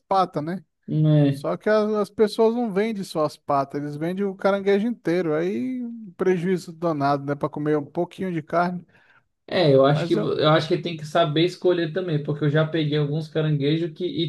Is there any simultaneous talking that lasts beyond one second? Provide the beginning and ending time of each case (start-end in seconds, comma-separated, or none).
none